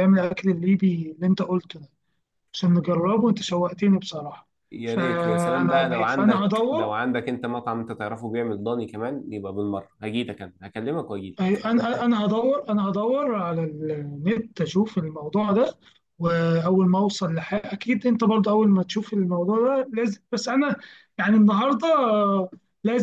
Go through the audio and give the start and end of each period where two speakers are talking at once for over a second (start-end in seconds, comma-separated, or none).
4.8-6.9